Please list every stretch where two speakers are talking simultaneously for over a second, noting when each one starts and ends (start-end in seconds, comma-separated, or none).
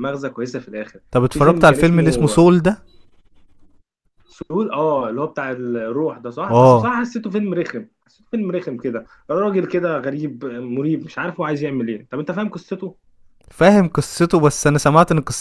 1.1-2.5